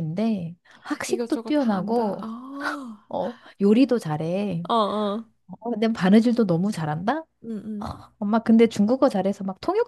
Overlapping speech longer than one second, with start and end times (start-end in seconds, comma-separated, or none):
1.1-2.3